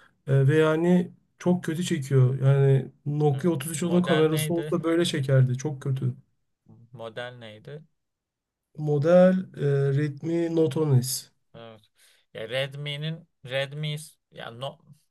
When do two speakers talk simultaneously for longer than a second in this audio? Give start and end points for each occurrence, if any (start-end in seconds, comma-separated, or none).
3.3-4.8